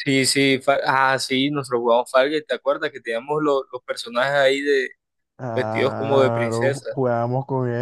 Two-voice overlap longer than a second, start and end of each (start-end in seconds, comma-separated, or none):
5.5-6.9